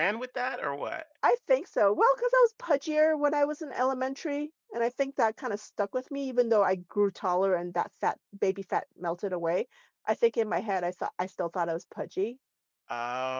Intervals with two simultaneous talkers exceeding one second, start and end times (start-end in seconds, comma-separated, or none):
none